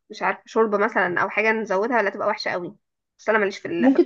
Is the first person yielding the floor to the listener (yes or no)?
yes